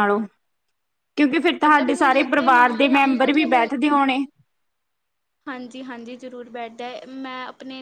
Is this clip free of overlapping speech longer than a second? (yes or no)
no